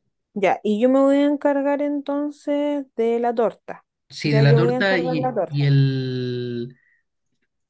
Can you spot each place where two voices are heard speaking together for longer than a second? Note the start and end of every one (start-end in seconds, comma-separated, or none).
4.2-5.7